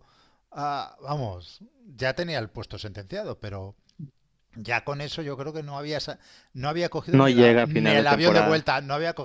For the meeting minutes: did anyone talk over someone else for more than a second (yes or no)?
yes